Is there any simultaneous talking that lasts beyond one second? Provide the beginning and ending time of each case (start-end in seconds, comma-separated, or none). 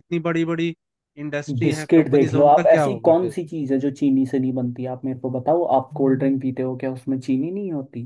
1.6-3.4